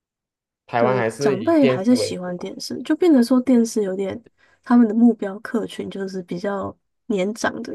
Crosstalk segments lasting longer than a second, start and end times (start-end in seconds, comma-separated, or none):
0.8-2.5